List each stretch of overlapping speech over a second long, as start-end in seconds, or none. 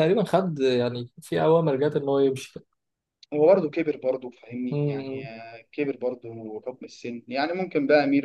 none